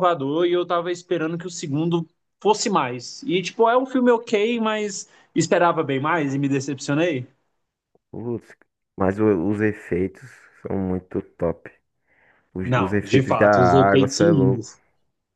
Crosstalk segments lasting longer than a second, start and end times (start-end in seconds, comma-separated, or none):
12.6-14.7